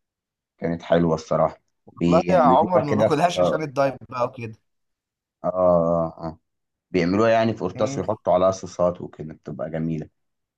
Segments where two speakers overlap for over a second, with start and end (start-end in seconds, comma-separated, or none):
2.0-3.7